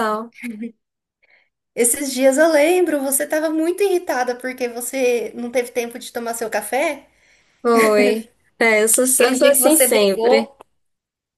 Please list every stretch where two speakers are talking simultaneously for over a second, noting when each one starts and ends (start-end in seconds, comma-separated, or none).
9.1-10.5